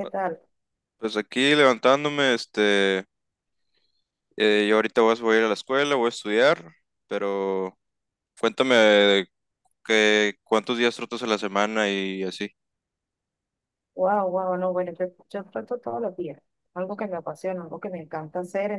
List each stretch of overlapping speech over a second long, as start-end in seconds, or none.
none